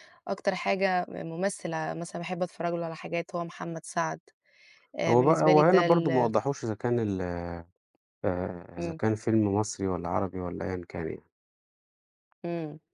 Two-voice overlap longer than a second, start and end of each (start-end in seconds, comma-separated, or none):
5.1-6.3